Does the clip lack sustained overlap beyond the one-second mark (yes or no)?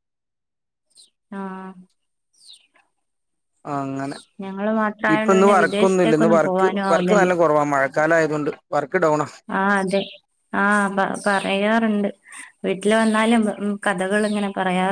no